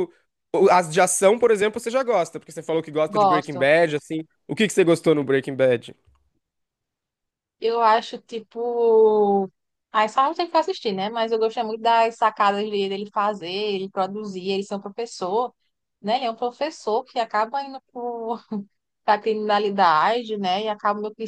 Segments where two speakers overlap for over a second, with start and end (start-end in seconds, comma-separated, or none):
none